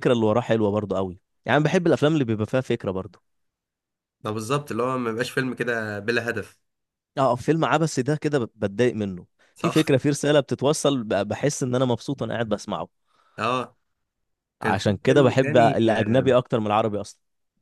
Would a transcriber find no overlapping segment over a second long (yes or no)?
no